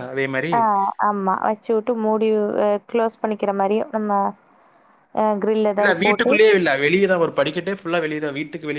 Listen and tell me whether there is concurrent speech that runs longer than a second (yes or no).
no